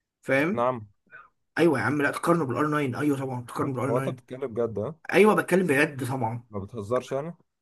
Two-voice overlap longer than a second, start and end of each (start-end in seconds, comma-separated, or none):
none